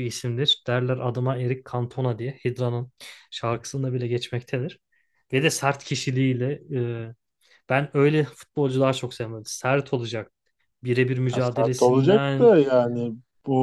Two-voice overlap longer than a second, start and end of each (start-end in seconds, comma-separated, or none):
11.3-12.5